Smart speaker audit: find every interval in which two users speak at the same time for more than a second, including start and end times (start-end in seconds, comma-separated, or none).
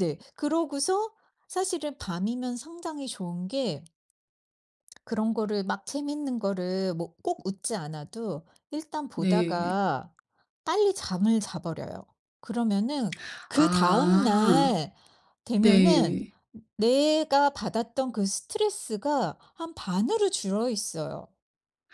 13.5-14.7